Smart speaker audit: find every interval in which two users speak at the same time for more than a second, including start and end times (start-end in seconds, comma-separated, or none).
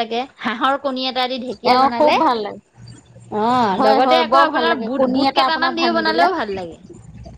3.8-6.3